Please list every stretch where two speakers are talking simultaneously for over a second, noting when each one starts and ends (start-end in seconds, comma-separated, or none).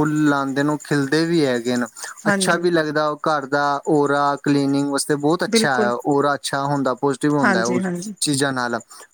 none